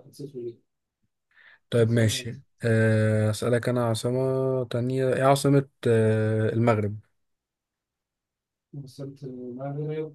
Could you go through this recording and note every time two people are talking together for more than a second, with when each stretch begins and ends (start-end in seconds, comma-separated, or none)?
none